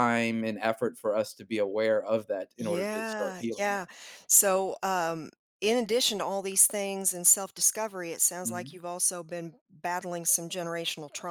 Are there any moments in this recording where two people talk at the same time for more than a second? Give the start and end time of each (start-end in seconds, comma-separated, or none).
2.6-3.9